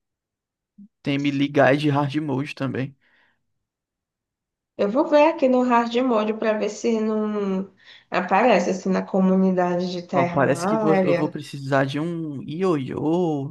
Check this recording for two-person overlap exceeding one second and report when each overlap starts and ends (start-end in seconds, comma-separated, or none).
10.1-11.3